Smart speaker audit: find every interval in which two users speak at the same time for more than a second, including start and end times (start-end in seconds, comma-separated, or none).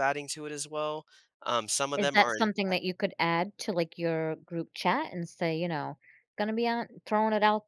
none